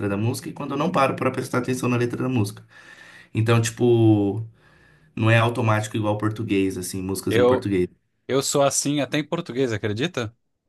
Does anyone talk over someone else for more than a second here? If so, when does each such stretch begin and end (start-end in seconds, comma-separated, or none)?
none